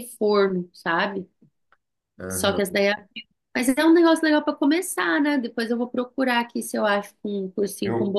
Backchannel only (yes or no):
no